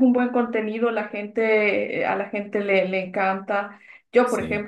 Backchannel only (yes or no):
yes